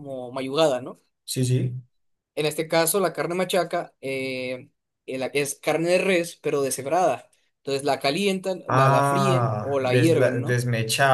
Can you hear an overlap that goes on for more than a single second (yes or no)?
yes